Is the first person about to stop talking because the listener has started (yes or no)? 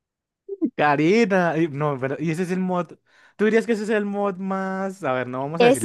yes